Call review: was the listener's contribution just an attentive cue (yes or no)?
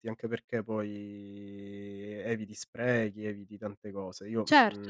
no